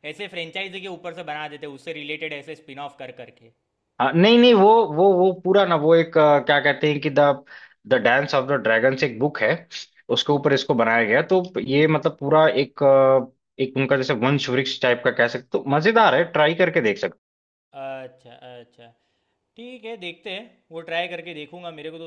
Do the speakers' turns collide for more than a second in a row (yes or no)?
no